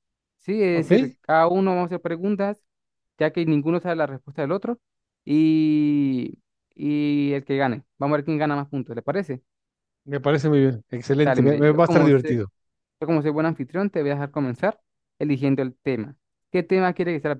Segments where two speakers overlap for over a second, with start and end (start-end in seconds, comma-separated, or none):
11.2-12.4